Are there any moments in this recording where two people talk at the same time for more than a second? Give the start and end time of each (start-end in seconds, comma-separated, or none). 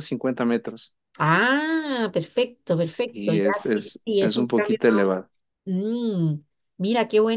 2.7-5.1